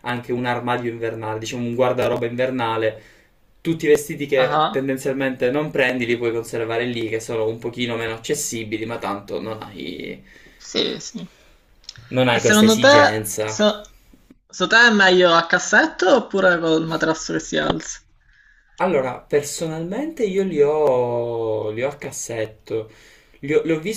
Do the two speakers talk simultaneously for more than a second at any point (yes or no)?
yes